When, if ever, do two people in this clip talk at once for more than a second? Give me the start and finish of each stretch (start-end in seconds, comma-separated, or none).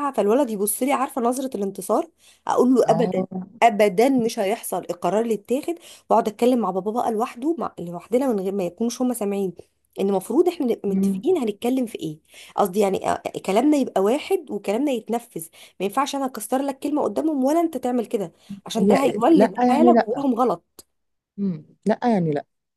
18.8-20.3